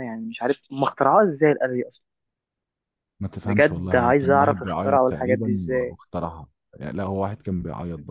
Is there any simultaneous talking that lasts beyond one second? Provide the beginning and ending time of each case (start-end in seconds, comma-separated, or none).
3.4-6.0